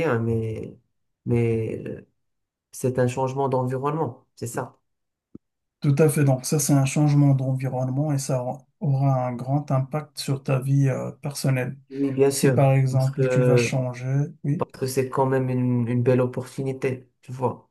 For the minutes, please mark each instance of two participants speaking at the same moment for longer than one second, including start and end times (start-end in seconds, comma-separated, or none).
12.3-13.7